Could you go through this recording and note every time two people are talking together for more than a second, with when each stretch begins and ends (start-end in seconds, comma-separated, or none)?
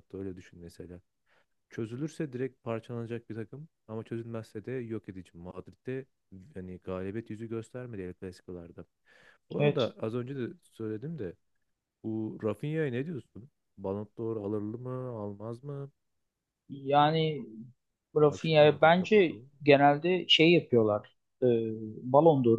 18.2-19.7